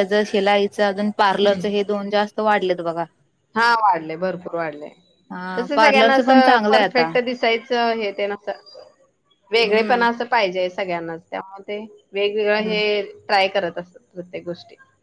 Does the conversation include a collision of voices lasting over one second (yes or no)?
yes